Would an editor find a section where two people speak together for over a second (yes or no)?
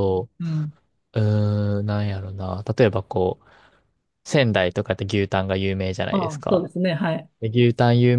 no